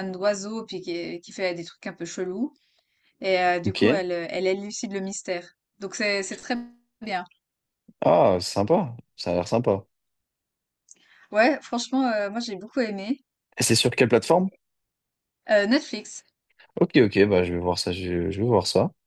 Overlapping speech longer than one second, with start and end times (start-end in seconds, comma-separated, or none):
none